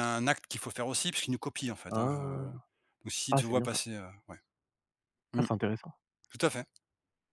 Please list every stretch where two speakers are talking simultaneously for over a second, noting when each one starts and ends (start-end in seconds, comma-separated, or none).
none